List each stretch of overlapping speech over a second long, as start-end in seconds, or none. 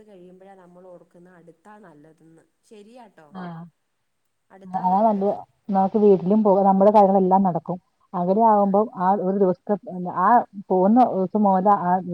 none